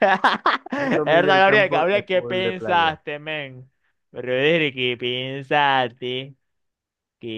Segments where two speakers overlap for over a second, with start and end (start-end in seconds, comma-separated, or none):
0.8-3.0